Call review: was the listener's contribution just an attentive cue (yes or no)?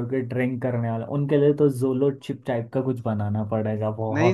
no